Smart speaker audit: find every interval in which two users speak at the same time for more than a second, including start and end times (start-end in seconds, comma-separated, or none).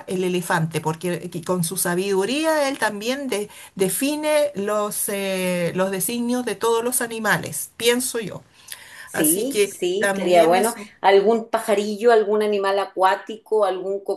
9.1-10.9